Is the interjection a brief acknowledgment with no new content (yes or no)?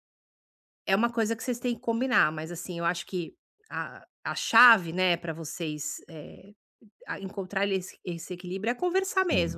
yes